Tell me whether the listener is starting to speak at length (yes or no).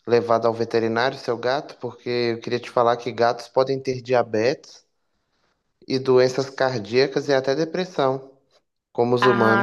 yes